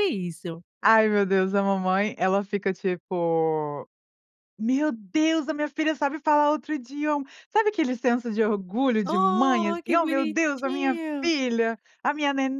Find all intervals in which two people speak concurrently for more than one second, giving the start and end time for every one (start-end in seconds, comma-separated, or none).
9.1-11.3